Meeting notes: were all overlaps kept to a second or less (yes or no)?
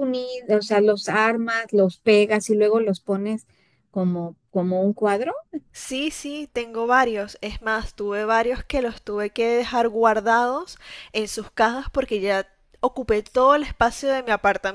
yes